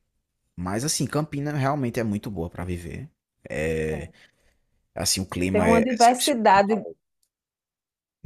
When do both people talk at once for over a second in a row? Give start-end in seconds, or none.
5.5-6.8